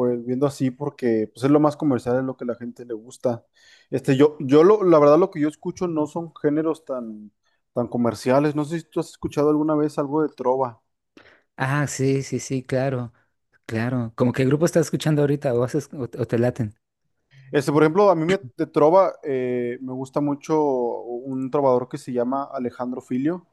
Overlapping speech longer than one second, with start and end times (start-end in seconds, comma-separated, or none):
none